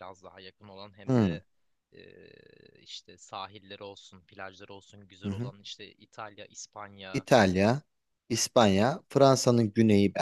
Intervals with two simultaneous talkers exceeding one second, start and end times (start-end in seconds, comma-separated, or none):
none